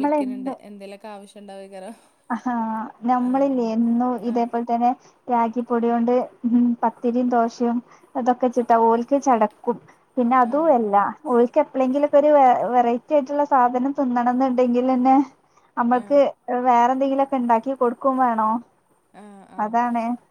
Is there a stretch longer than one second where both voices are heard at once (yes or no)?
no